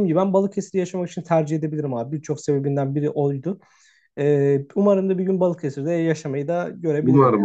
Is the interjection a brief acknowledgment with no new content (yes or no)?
no